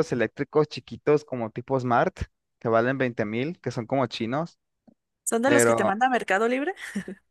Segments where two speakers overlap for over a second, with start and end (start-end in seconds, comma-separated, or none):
none